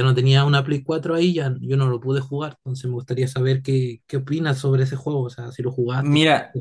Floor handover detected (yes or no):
yes